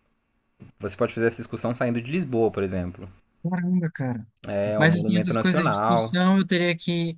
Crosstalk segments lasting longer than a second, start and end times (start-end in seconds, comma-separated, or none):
4.8-6.1